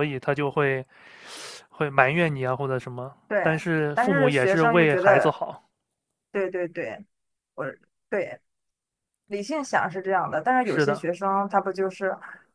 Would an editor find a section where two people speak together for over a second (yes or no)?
yes